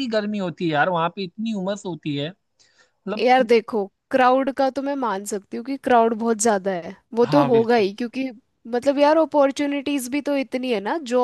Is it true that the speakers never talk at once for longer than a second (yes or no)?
yes